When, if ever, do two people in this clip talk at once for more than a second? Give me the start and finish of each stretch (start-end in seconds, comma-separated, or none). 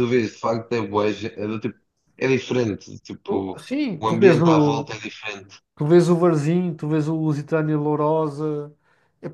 3.3-4.9